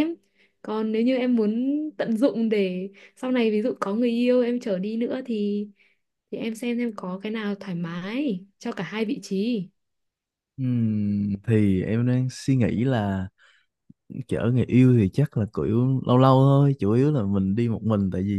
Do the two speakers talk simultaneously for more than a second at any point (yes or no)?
no